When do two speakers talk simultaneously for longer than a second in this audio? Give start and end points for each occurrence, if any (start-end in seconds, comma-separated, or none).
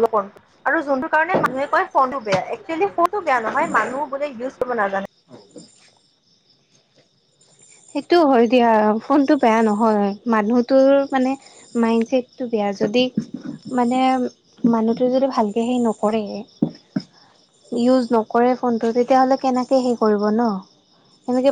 none